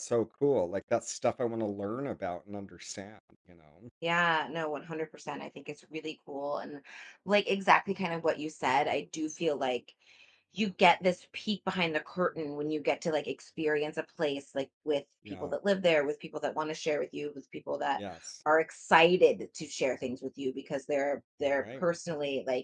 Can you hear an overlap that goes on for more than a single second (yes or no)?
no